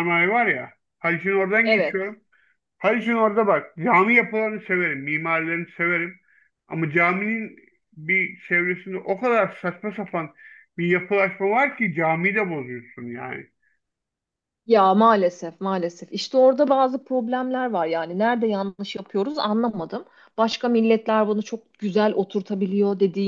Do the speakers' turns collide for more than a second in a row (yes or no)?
no